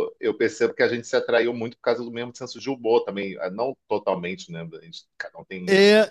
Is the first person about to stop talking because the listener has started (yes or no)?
yes